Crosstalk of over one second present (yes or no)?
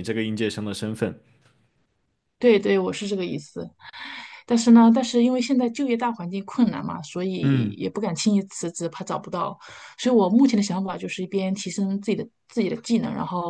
no